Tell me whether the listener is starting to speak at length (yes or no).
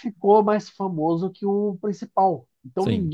no